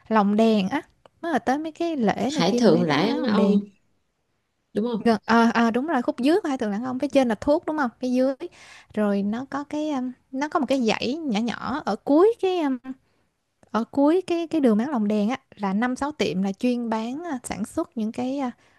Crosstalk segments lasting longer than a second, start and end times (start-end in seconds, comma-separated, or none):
2.3-3.6